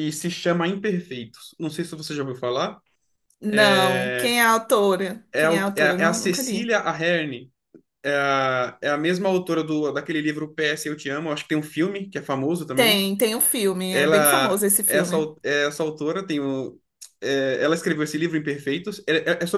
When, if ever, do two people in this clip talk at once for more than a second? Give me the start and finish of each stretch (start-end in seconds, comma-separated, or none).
5.3-6.7, 13.9-15.3